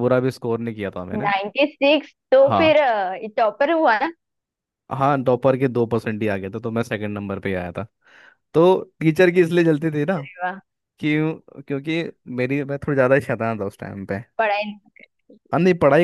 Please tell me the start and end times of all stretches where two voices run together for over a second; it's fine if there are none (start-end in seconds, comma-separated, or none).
none